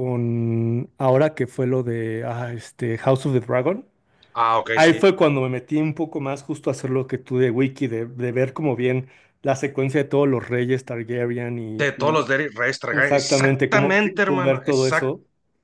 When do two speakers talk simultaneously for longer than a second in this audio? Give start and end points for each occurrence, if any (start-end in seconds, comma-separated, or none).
12.9-15.1